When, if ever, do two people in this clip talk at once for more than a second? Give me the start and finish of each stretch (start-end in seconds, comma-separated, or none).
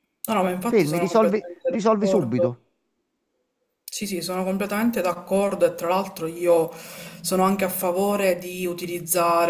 0.7-2.5